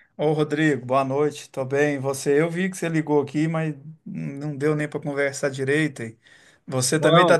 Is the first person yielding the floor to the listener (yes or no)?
no